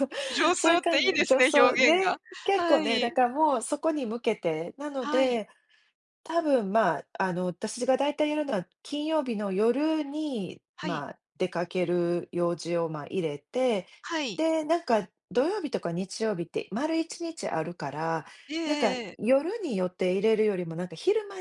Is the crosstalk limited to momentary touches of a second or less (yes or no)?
no